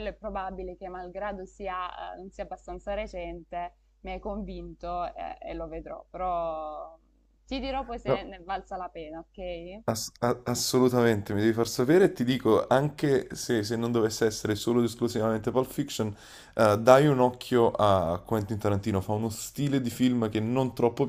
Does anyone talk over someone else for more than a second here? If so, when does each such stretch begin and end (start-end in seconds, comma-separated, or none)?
none